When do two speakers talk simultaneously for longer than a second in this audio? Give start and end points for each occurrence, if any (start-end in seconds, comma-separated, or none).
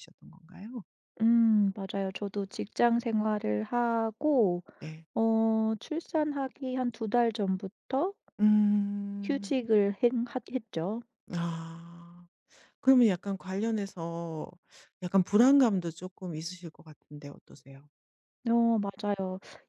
none